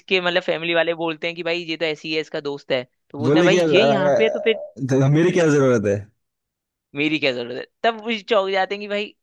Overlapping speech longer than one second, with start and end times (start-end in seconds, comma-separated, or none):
3.2-4.6